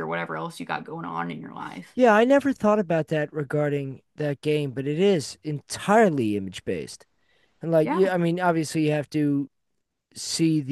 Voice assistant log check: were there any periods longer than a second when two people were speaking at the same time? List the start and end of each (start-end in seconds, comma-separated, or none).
none